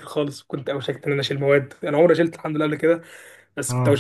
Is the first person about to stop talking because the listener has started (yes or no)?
no